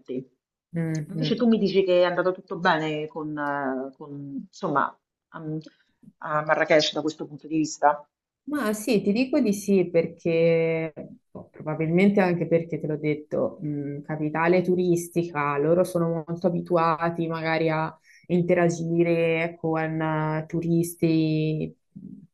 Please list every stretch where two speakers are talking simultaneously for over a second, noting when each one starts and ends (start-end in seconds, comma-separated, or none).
none